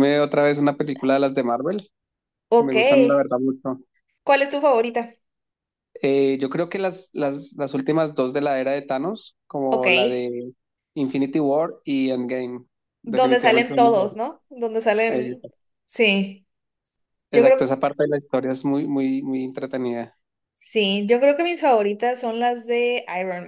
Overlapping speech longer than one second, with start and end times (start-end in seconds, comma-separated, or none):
13.0-14.3